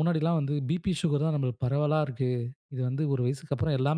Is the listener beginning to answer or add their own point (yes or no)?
no